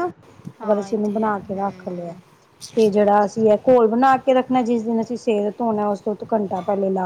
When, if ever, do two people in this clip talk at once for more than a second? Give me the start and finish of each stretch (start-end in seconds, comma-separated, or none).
0.6-2.1